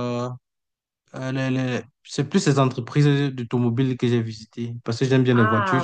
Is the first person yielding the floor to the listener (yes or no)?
yes